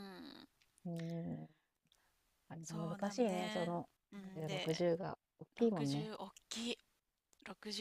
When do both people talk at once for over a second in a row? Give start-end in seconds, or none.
2.6-4.8